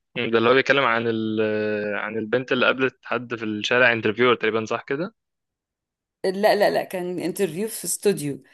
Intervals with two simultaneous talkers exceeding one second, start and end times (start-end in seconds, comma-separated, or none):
none